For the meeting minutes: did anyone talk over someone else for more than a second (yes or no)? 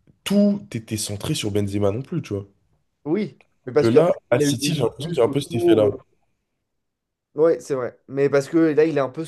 yes